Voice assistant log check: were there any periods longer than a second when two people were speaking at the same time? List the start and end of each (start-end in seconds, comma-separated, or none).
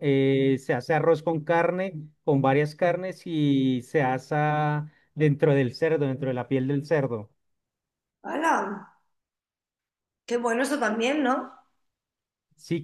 none